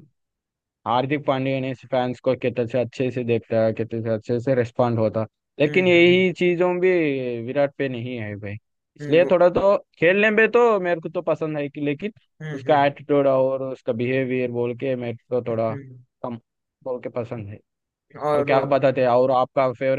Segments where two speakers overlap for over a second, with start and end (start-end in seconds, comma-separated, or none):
none